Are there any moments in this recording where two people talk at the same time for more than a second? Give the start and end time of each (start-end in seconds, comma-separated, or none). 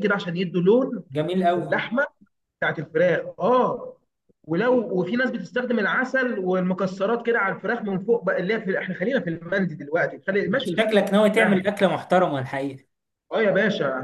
none